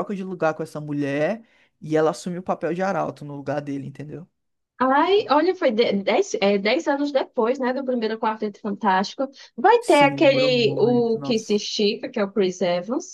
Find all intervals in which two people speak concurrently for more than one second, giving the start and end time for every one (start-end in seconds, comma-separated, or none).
9.8-11.6